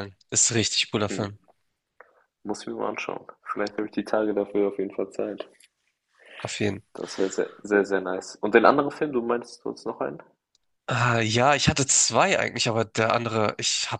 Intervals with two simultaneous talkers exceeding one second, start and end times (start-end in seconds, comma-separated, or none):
none